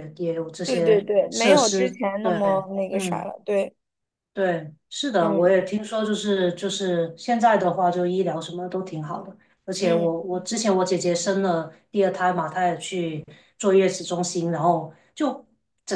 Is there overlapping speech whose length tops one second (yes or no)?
yes